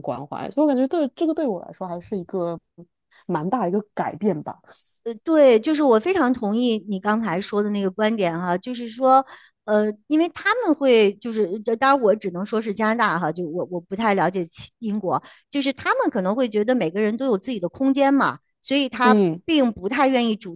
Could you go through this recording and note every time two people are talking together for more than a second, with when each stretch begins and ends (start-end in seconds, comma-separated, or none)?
none